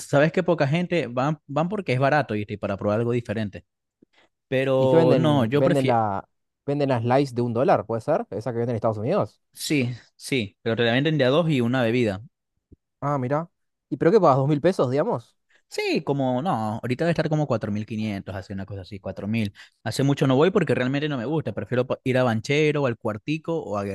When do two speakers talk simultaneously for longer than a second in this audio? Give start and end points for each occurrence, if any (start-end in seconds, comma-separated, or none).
4.8-6.0